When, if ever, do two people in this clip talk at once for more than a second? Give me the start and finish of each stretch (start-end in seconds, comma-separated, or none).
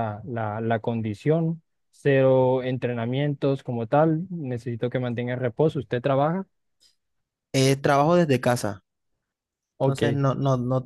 none